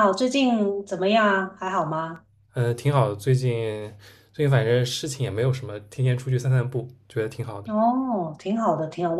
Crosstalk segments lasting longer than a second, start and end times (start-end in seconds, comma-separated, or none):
none